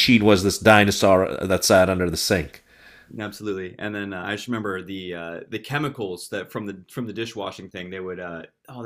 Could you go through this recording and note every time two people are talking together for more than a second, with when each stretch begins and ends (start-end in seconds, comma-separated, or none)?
none